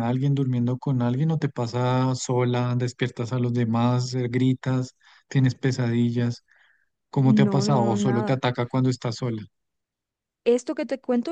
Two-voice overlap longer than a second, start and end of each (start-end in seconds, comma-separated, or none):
7.2-8.4